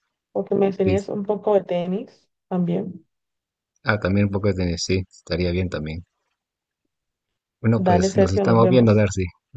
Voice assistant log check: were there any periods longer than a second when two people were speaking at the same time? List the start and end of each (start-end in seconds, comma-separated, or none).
7.8-9.1